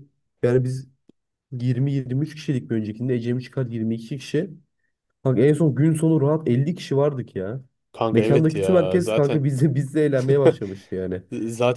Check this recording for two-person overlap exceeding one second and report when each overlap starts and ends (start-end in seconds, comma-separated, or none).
8.1-9.5